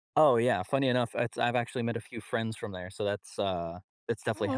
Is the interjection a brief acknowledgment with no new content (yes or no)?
yes